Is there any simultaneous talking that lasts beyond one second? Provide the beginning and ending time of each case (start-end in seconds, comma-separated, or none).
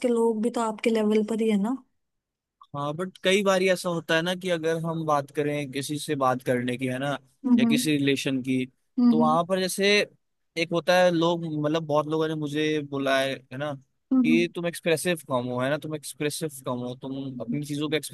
none